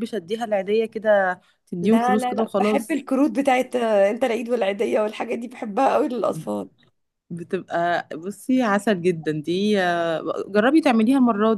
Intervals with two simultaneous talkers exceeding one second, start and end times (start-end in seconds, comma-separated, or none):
1.8-3.1